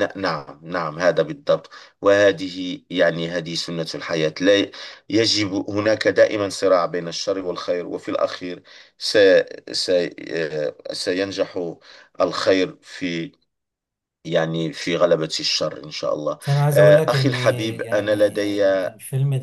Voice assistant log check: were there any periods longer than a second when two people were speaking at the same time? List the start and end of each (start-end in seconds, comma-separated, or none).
16.4-18.6